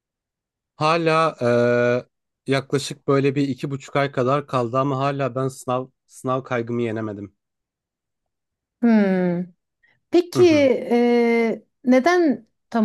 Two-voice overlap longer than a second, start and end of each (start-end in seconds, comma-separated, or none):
none